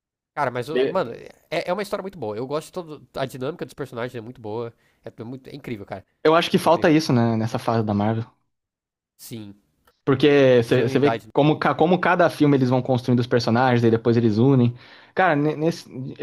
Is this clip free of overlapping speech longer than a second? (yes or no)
yes